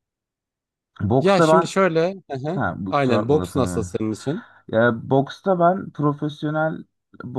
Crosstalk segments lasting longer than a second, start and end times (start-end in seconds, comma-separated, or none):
2.5-3.9